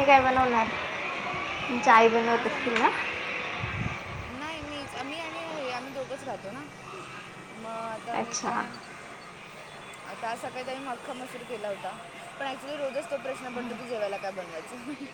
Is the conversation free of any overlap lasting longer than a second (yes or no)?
yes